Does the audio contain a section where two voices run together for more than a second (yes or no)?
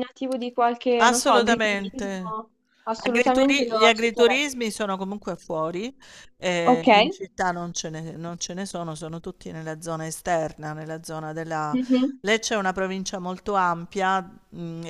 yes